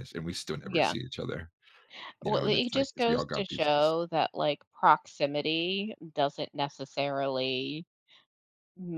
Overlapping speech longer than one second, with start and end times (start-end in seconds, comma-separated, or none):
2.2-3.9